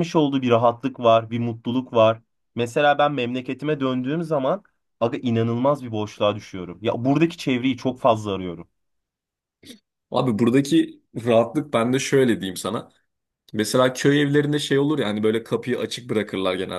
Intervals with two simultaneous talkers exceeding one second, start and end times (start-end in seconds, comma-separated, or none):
none